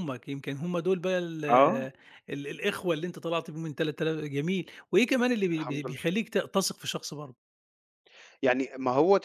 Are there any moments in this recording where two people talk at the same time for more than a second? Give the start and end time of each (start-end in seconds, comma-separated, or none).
none